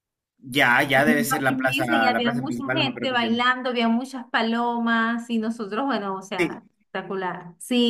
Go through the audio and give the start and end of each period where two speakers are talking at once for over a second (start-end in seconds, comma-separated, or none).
1.0-3.4